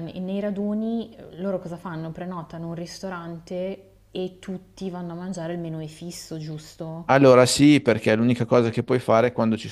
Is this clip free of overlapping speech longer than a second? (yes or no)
yes